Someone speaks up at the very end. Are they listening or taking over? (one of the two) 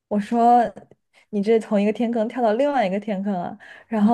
listening